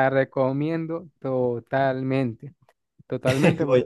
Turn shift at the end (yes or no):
no